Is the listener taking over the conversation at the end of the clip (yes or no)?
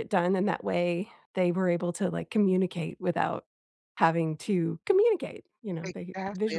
yes